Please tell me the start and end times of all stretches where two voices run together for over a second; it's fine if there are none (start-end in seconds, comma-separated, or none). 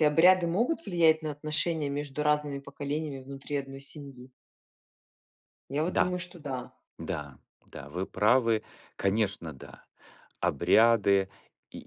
none